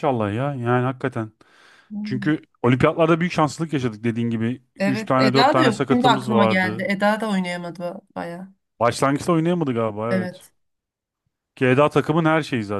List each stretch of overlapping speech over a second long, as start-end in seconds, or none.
4.8-6.9